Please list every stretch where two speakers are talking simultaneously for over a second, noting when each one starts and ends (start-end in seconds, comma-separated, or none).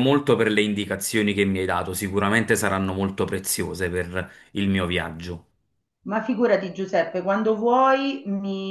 none